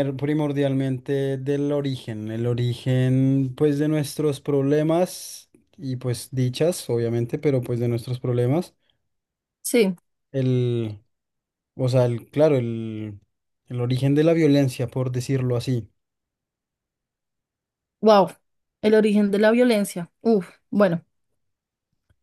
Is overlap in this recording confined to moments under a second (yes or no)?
yes